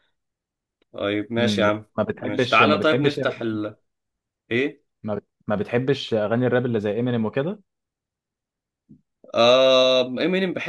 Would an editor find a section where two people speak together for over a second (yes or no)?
yes